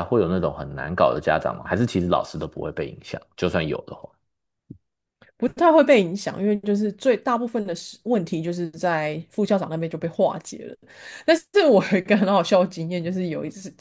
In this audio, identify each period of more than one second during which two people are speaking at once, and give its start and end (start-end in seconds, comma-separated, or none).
none